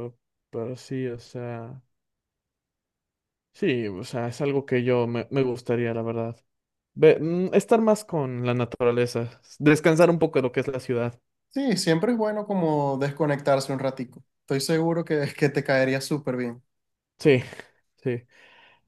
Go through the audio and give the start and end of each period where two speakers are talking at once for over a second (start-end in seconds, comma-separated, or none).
none